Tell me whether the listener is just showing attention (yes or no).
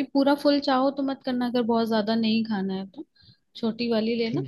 yes